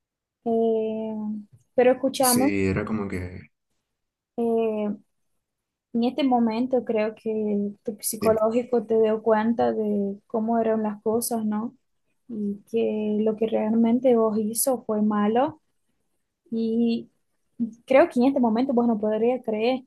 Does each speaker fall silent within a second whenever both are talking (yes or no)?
yes